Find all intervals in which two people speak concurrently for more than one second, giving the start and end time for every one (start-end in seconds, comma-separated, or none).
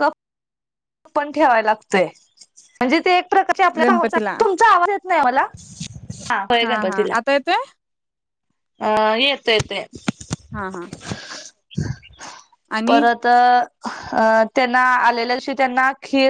none